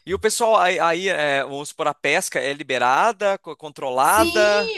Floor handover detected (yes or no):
yes